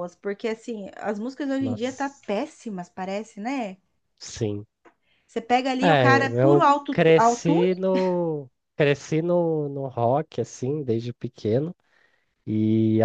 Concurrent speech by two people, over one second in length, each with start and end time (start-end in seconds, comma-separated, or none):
5.8-7.7